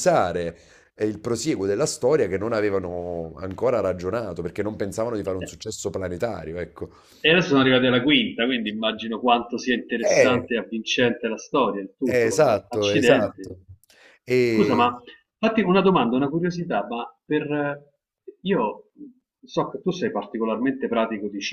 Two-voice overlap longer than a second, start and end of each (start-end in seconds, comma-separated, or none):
12.1-13.5